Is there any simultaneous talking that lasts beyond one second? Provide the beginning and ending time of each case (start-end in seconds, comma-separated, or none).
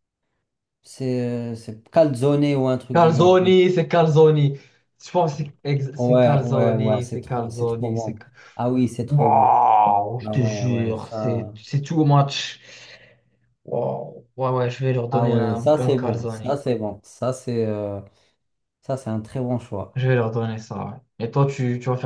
6.0-8.3, 10.2-11.5, 15.1-16.6